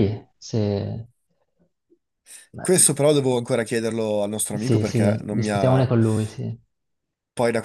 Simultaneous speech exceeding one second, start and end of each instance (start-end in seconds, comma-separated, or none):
4.5-5.9